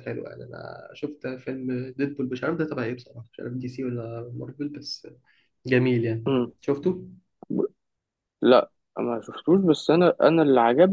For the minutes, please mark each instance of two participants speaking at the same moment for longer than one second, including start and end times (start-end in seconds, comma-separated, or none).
none